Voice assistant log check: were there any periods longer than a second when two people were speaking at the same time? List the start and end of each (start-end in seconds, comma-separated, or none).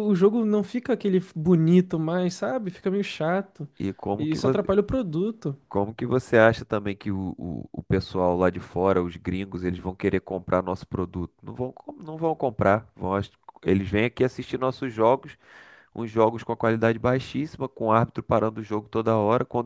none